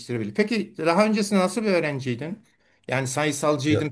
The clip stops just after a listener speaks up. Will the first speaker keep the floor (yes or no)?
yes